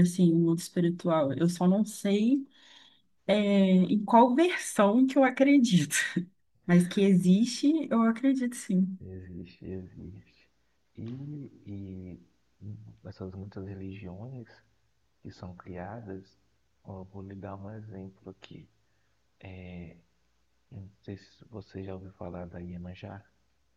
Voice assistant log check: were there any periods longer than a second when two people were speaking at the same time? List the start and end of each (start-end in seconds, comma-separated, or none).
none